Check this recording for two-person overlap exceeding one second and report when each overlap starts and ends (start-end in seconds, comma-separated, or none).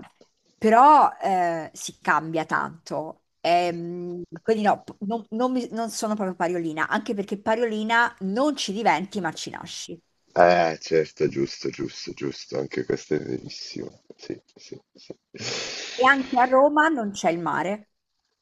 none